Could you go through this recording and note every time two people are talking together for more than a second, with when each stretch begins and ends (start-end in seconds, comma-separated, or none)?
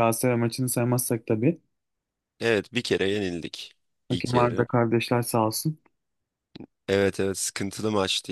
none